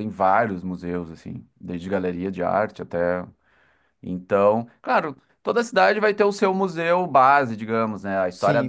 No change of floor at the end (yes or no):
yes